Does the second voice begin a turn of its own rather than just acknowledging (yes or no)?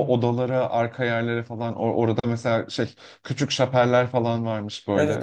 yes